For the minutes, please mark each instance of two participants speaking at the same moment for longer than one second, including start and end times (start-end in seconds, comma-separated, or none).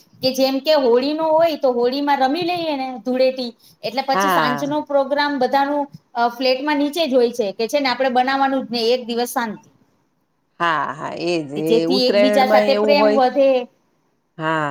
11.7-13.2